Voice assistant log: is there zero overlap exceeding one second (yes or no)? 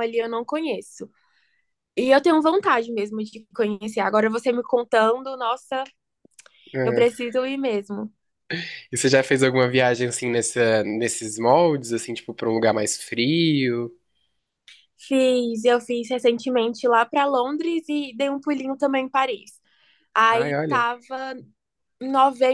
yes